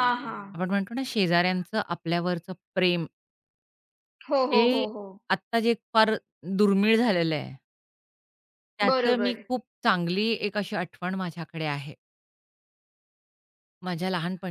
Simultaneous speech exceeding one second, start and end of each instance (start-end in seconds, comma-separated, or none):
none